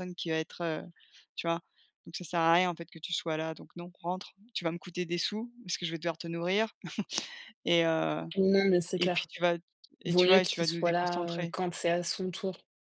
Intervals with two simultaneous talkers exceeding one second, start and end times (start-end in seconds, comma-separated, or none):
10.0-11.5